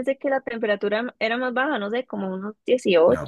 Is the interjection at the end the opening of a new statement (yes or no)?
yes